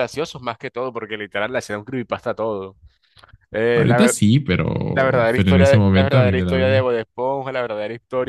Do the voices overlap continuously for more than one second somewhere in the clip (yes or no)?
yes